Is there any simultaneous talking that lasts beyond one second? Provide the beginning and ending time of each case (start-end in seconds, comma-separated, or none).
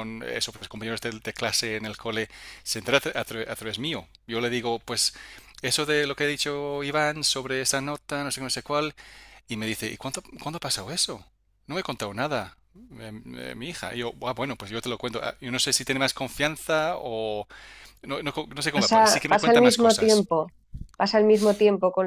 18.7-20.3